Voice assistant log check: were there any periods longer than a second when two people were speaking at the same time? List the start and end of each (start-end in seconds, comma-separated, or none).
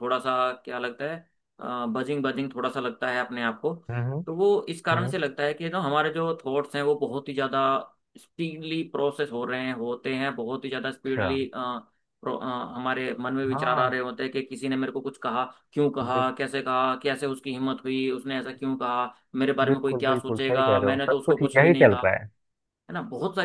19.6-22.0